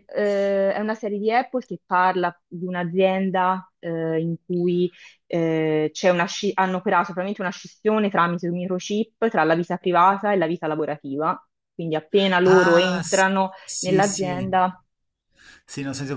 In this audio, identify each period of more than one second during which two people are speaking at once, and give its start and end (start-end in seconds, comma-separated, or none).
12.4-14.3